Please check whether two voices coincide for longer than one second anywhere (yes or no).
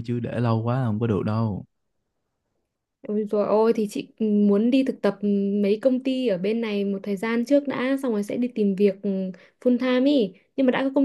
no